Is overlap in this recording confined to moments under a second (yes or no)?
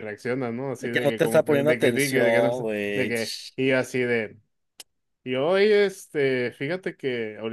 no